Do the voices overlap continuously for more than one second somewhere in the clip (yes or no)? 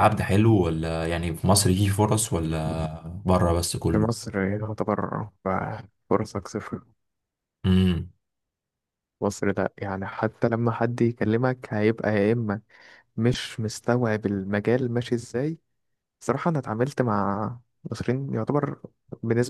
no